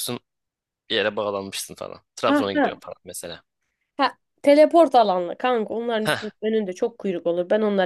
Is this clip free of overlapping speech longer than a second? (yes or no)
yes